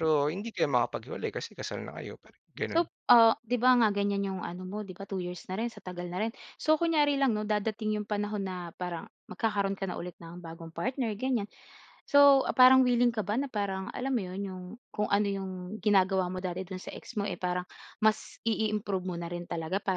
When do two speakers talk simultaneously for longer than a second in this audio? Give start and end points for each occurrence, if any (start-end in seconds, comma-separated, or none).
none